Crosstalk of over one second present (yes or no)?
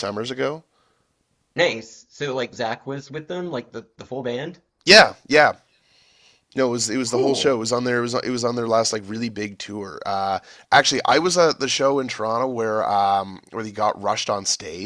no